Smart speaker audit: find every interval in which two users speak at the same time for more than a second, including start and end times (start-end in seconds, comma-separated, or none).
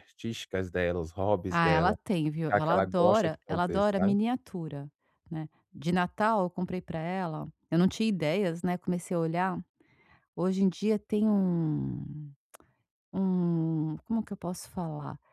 1.5-4.2